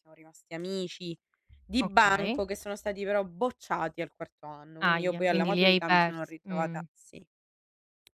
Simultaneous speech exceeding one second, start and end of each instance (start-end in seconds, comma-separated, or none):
4.8-6.8